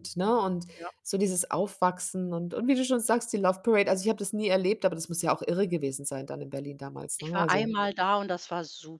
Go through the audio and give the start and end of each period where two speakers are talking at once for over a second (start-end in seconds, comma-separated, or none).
none